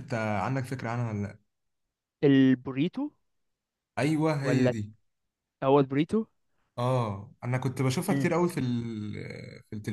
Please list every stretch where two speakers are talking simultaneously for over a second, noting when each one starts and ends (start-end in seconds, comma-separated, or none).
none